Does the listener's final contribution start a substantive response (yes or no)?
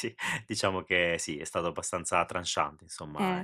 yes